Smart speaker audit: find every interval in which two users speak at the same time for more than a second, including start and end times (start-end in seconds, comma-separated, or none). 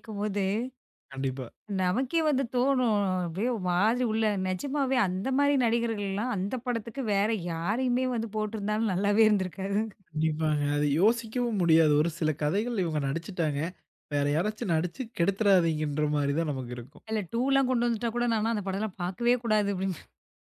none